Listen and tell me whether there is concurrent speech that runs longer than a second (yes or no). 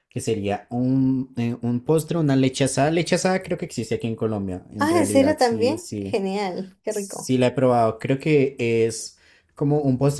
yes